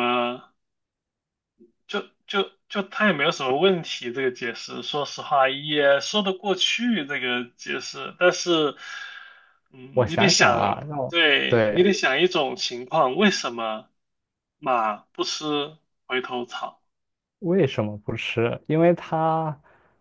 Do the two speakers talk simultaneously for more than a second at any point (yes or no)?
yes